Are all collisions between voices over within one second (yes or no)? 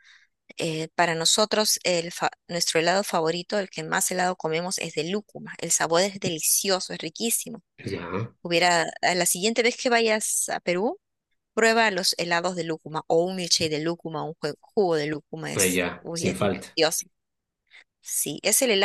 no